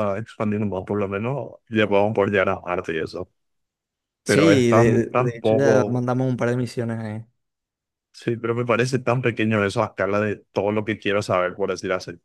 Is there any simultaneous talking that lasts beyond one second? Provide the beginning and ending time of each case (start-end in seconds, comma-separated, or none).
4.2-6.1